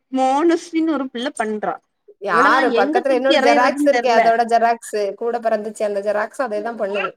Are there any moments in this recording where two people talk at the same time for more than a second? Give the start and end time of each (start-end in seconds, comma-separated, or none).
2.3-4.2